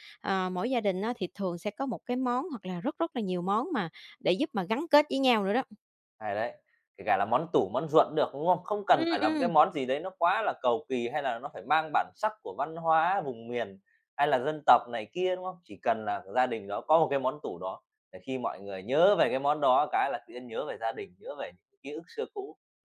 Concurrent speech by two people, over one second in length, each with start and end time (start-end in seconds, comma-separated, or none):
none